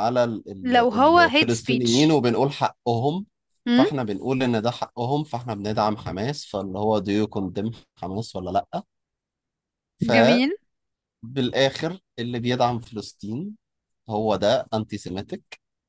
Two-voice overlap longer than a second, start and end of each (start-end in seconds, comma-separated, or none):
0.6-2.2